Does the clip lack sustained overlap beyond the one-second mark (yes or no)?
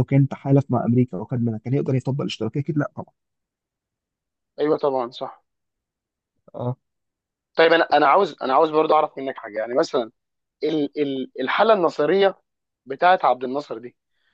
yes